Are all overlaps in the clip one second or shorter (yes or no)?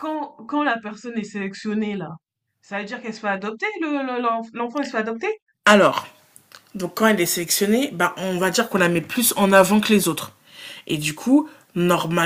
yes